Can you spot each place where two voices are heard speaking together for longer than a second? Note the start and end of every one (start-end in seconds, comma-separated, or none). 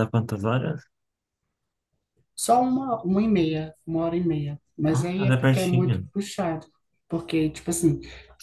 4.9-6.1